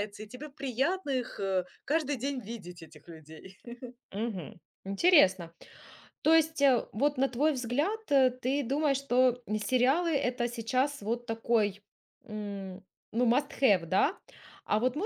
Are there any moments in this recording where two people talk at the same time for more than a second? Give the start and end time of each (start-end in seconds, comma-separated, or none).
none